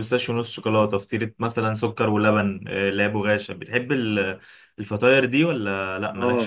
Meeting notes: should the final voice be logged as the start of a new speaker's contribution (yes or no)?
yes